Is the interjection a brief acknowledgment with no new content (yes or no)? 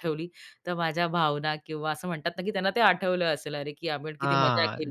no